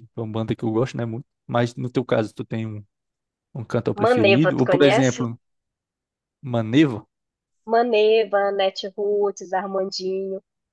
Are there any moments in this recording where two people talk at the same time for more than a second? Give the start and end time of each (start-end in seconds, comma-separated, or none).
4.0-5.3